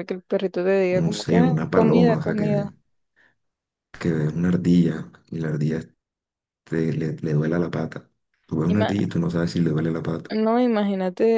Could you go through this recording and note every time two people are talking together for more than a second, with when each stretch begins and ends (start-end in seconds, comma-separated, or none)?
1.0-2.7